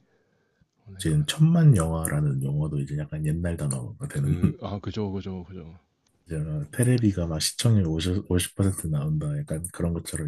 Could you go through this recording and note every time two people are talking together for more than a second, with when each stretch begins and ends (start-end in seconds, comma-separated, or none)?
none